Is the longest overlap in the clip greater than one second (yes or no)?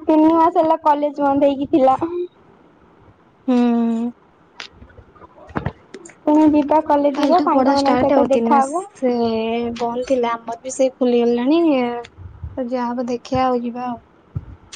yes